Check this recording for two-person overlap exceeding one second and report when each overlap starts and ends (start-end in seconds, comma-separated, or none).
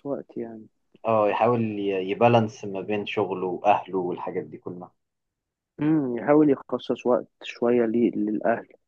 none